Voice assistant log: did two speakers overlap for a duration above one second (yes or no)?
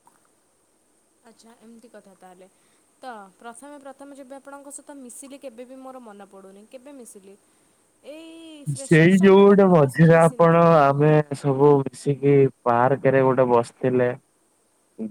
yes